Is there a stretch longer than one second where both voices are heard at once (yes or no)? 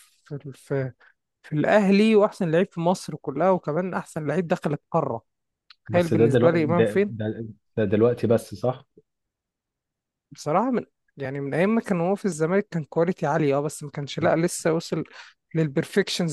yes